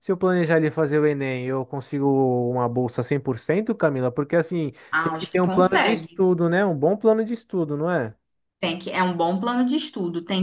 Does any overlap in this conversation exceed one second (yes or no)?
yes